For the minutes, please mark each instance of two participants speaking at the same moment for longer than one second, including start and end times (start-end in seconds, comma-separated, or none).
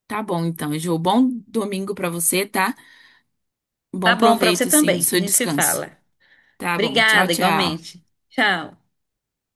4.0-5.8, 6.8-8.0